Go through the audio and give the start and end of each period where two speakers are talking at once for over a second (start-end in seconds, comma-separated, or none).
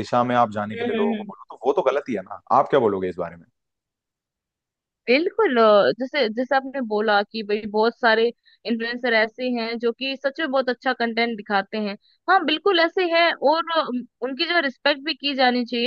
none